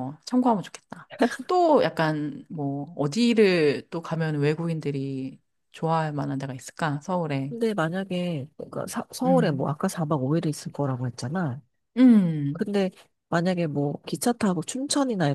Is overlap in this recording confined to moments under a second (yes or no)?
yes